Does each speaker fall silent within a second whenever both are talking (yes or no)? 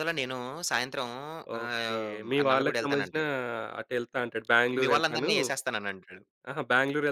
no